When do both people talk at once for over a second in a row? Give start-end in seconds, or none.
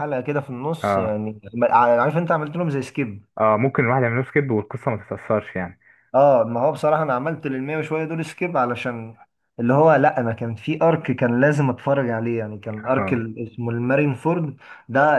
none